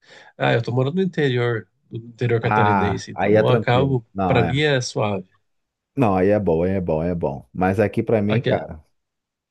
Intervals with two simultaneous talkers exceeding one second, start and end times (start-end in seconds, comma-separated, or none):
2.4-4.5